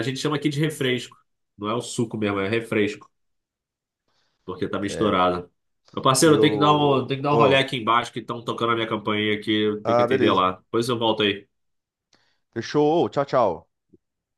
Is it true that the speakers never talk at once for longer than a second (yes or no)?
yes